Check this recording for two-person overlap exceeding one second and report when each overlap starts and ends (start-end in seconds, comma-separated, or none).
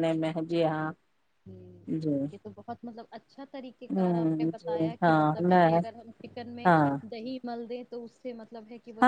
4.0-5.8